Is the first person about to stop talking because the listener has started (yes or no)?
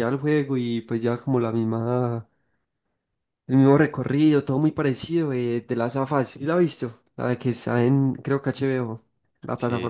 yes